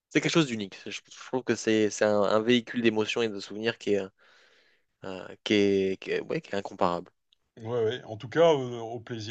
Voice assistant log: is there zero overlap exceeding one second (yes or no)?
yes